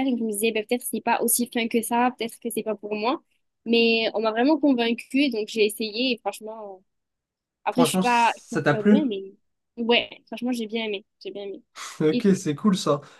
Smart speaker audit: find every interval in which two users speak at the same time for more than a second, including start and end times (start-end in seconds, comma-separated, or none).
7.7-9.1